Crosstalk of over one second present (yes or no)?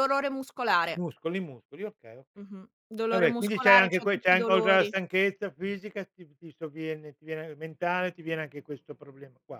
yes